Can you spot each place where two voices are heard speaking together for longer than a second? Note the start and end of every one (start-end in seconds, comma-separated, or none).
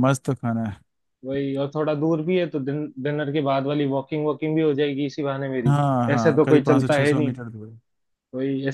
5.7-7.4